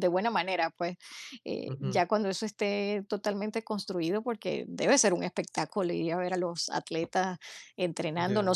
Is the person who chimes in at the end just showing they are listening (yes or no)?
yes